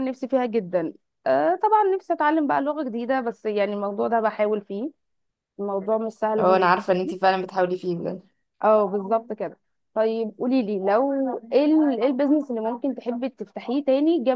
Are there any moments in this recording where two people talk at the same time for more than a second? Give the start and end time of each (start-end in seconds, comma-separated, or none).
none